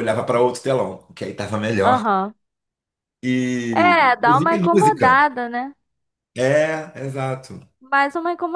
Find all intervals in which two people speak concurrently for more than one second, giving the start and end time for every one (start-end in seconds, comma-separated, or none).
3.7-5.2